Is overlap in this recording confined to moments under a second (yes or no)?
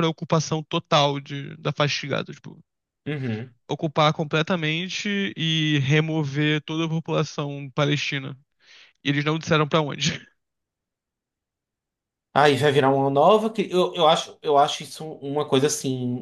yes